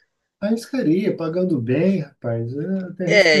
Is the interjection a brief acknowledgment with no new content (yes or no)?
no